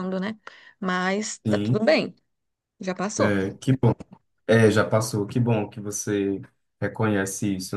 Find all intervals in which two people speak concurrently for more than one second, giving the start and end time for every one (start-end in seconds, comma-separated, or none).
none